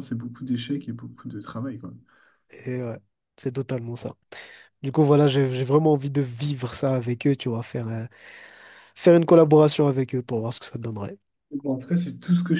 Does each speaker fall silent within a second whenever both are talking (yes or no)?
yes